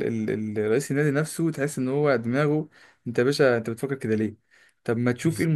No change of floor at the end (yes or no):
yes